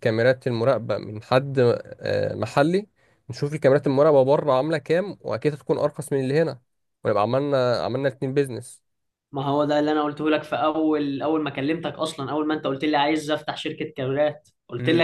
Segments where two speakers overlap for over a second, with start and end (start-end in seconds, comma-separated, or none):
none